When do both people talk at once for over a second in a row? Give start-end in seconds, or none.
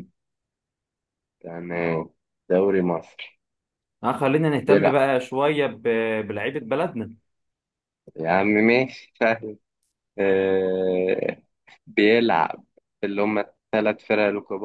none